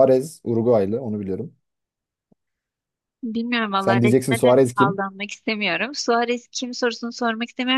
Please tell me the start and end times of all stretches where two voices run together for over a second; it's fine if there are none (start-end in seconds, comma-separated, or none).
3.8-5.0